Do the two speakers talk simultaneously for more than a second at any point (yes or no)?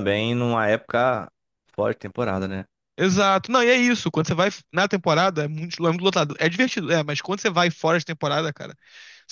no